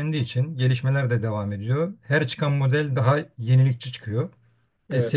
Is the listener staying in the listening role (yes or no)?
yes